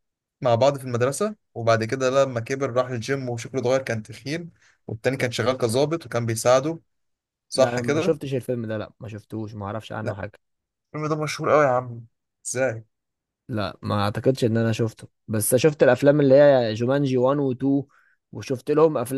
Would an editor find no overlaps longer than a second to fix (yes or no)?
yes